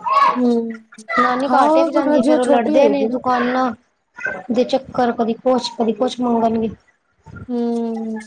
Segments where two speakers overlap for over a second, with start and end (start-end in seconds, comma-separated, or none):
1.5-3.2